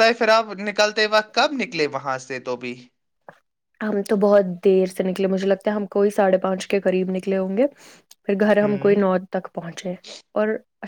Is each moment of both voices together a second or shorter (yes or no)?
yes